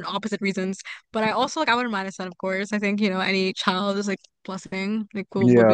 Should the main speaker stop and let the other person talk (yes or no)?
yes